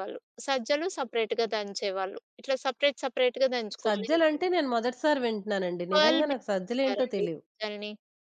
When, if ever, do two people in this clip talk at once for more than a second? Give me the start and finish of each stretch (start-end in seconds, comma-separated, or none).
5.9-7.4